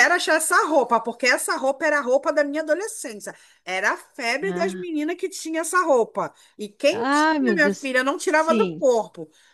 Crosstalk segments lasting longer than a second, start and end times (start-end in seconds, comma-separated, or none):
6.9-8.8